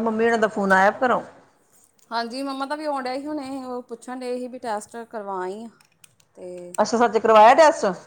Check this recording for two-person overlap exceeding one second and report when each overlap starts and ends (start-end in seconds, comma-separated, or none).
none